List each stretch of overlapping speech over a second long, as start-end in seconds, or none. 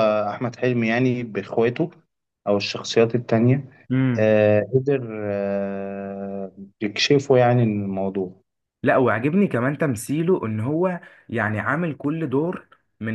none